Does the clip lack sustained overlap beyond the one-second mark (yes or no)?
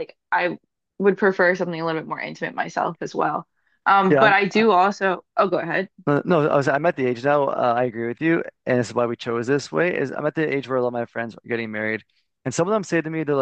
yes